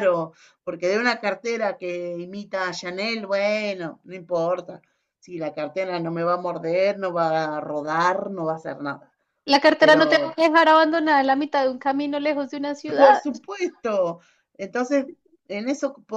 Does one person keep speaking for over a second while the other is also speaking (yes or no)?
no